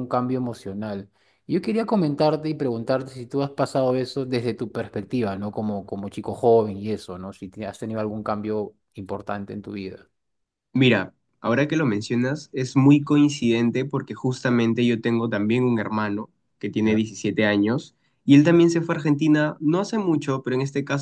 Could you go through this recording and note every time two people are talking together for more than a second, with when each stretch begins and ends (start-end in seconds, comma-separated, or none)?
none